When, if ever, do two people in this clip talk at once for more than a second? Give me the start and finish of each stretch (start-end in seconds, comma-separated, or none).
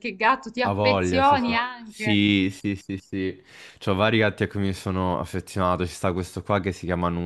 0.6-2.2